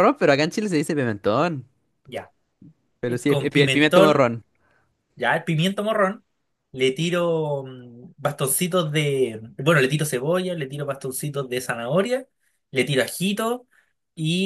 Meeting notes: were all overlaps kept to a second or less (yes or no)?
no